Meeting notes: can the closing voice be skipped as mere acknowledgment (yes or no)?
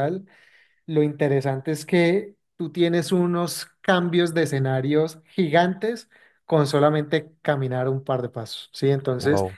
yes